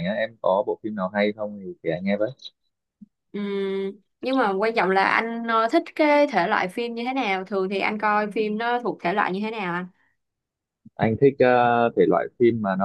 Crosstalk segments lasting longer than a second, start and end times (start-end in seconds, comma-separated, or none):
none